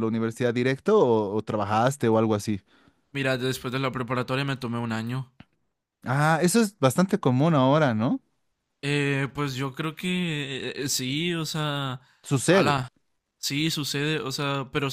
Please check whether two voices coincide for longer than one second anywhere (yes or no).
no